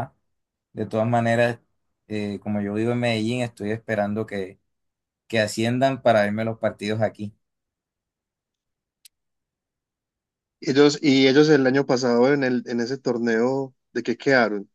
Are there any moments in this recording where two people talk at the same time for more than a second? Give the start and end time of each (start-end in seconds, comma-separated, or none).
none